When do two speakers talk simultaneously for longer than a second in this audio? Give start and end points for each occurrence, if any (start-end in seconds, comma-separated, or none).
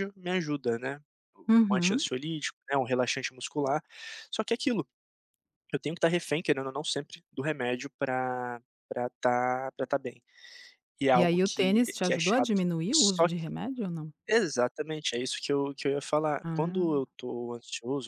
11.1-13.5